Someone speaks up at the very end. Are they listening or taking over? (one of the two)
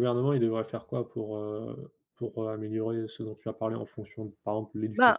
taking over